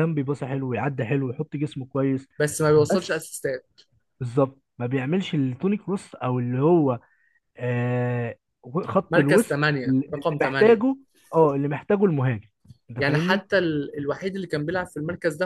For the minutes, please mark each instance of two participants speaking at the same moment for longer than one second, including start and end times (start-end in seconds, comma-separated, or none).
9.1-10.8